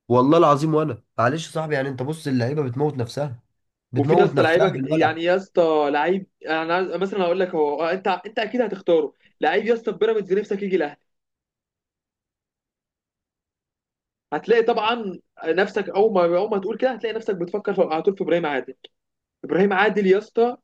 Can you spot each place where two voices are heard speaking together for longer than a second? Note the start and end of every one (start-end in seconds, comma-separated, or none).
4.0-5.2